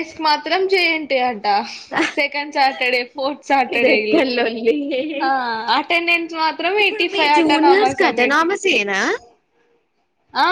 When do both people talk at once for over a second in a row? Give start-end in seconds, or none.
6.8-8.5